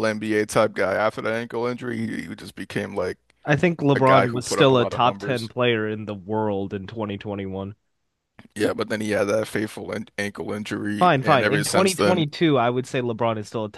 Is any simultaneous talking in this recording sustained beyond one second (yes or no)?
yes